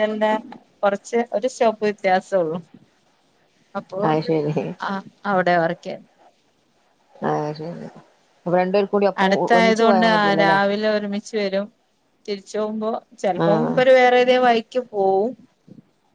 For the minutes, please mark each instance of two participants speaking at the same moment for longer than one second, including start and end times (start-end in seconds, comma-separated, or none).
none